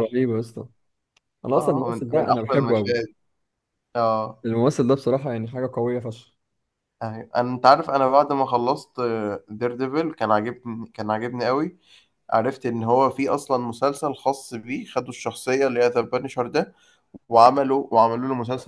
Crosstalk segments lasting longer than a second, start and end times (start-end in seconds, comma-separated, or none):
1.6-2.9